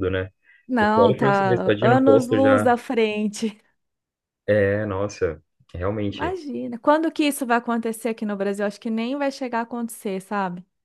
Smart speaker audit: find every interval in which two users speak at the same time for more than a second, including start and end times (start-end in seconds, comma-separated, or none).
0.8-2.7